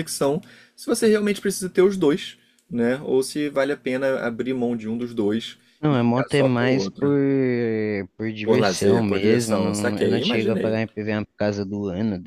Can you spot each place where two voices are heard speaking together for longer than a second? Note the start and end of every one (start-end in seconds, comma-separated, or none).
5.8-7.1, 8.4-10.8